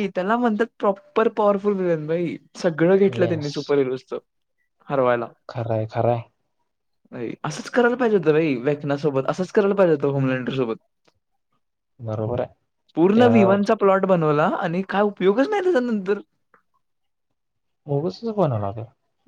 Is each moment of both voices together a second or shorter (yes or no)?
yes